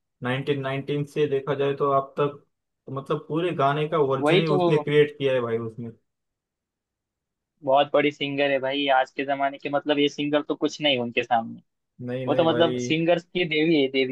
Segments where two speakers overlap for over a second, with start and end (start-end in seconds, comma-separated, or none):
none